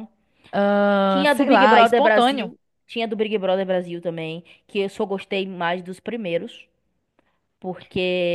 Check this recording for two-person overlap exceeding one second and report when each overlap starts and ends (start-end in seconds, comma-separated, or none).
1.1-2.5